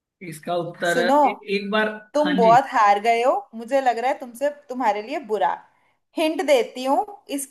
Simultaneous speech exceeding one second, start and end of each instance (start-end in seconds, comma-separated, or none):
none